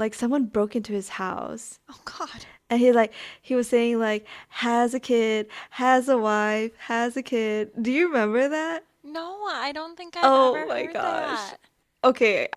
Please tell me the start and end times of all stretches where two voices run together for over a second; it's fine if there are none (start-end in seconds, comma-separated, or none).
10.2-11.5